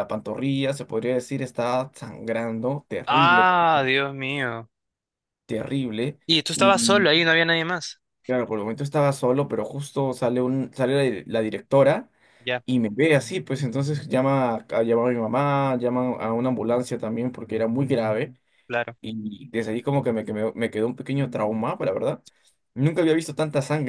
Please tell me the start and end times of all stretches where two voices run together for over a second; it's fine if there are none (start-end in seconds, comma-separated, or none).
none